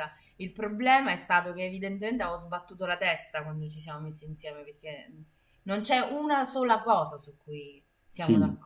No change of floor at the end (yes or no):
no